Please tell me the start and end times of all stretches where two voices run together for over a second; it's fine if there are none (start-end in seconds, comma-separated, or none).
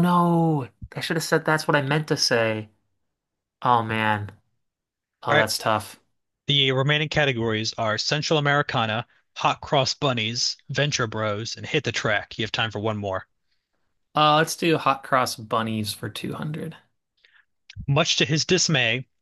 none